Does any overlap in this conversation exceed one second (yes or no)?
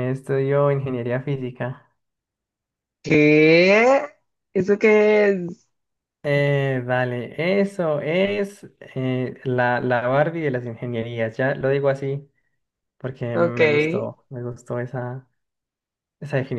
no